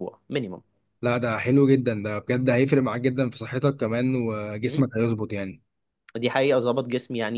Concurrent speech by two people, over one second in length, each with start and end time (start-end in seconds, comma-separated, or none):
none